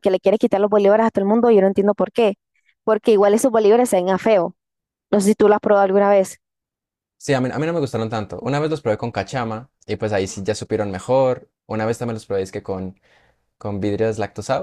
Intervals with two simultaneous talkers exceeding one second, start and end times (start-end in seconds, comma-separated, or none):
none